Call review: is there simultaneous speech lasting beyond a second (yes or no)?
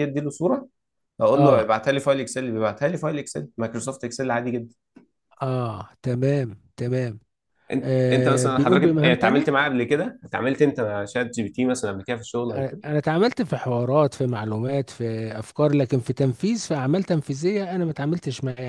yes